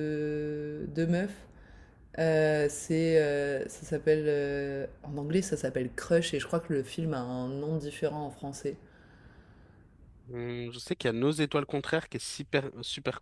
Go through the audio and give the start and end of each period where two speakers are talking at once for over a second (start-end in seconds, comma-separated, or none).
none